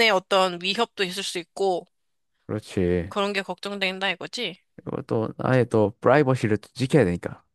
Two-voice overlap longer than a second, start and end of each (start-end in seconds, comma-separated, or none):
none